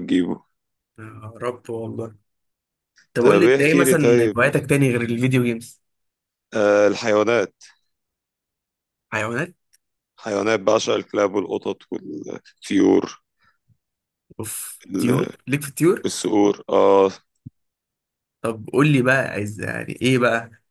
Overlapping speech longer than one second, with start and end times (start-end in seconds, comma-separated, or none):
3.2-4.5